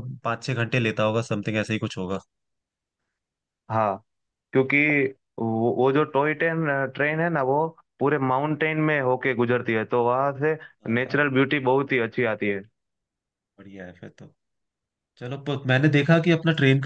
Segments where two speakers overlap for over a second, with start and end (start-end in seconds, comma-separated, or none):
none